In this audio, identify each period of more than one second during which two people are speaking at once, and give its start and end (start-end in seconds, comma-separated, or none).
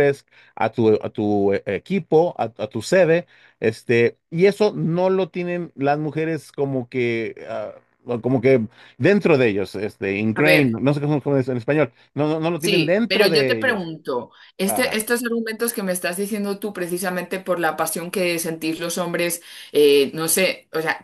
12.6-13.9